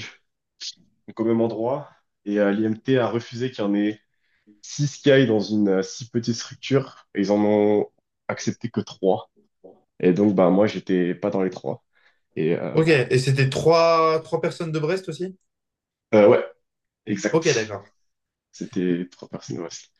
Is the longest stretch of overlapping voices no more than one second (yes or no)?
yes